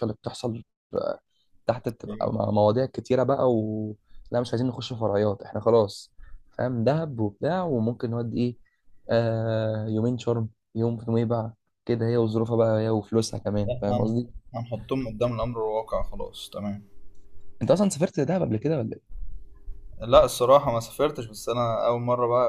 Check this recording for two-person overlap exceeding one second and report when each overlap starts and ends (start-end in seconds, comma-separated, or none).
none